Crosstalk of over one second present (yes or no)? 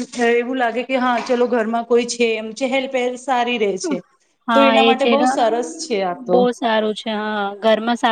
no